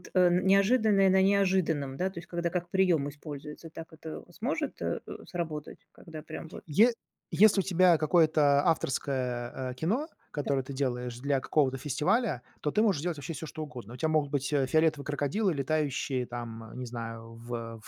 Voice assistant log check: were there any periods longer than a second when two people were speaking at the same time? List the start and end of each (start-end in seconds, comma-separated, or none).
none